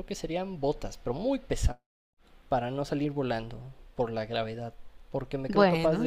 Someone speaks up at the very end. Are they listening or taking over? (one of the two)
listening